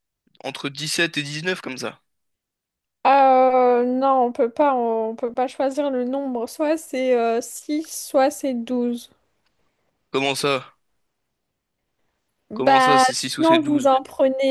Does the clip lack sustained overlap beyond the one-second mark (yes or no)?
no